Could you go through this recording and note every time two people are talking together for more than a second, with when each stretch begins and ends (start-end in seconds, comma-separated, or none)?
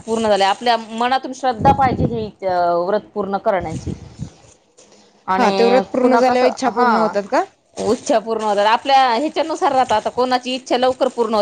5.4-7.1